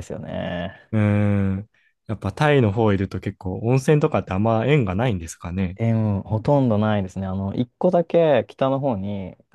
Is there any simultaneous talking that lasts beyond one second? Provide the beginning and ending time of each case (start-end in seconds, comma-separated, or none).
none